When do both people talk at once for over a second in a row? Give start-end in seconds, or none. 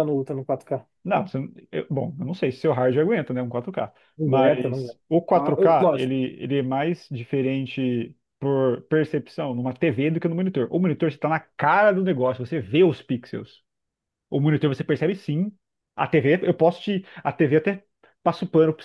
4.2-6.1